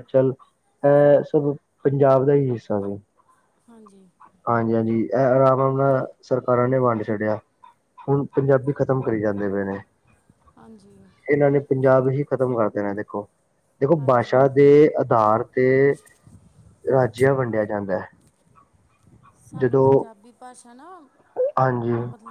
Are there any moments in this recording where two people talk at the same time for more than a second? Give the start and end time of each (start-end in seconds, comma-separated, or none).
none